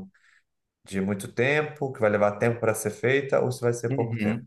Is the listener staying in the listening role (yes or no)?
no